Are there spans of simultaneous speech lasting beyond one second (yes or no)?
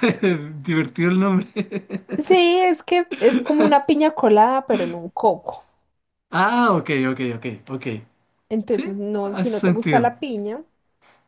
yes